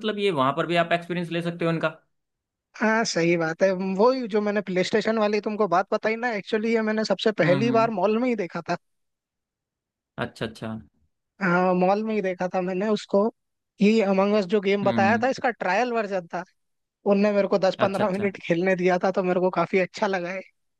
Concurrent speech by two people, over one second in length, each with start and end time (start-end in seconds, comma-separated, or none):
none